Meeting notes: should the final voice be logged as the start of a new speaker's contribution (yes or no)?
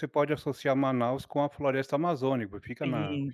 yes